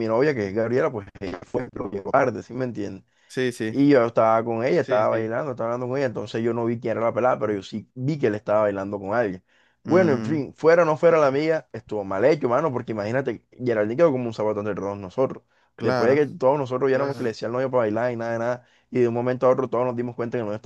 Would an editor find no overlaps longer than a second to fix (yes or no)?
yes